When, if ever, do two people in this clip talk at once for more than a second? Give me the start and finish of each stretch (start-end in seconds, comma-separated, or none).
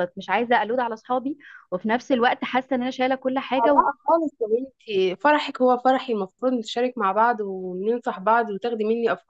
none